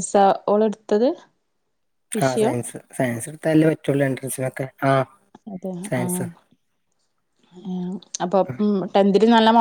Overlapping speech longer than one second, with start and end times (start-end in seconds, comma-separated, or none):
none